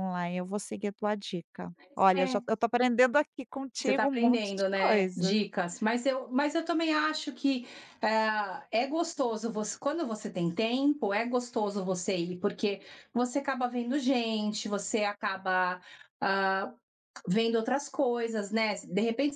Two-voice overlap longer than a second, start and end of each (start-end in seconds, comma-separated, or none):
3.8-5.4